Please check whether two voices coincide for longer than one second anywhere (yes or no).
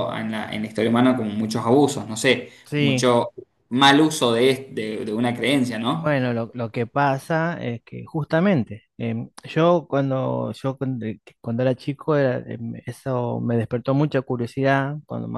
no